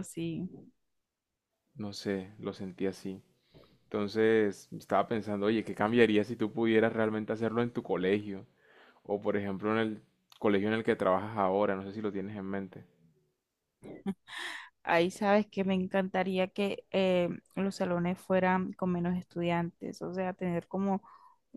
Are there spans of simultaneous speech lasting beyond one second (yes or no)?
no